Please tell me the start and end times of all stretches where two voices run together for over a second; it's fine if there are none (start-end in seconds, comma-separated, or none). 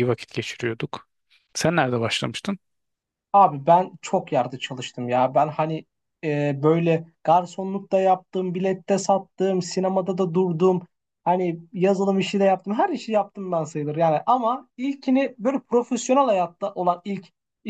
none